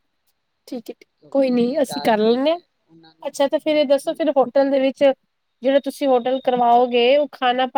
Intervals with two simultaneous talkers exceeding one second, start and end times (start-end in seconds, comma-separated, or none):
1.2-2.6